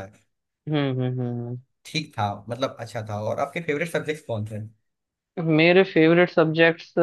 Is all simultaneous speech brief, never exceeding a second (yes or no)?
yes